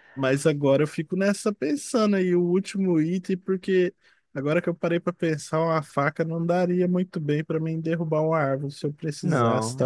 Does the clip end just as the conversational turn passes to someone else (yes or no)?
no